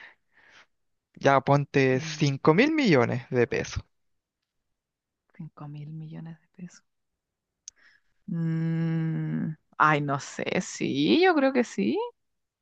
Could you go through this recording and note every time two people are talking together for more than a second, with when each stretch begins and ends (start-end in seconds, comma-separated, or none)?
none